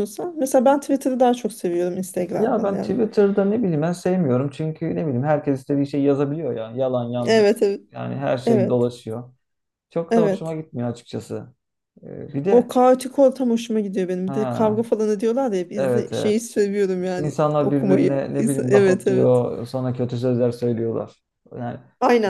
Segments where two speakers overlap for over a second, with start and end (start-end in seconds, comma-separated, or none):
17.2-19.4